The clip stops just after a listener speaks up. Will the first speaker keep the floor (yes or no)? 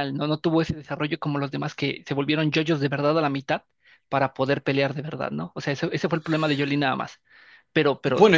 no